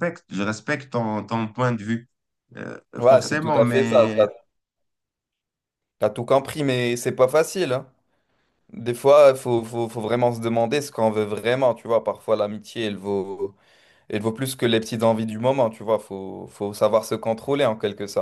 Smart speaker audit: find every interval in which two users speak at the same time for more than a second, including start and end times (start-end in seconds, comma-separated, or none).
3.0-4.2